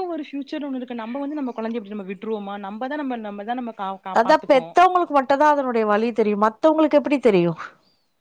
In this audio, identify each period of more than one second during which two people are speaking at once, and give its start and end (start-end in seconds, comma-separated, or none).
none